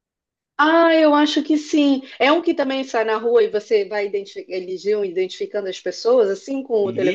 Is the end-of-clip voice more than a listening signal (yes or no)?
yes